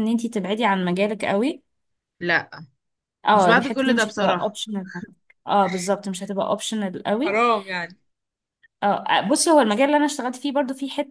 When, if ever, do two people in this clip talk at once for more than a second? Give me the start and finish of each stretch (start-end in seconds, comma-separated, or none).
3.3-4.5